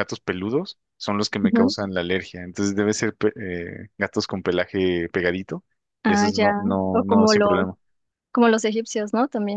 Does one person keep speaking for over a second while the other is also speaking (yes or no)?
yes